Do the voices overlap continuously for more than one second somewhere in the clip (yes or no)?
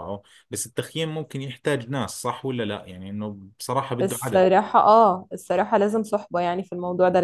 no